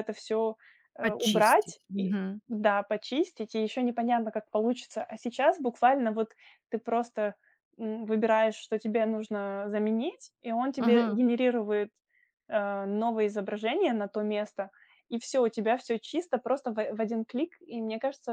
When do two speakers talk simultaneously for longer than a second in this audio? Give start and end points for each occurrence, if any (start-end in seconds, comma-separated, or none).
1.0-2.4